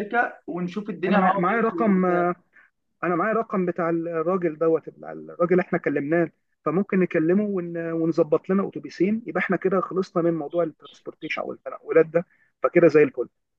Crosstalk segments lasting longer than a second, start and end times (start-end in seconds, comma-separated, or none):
1.1-2.3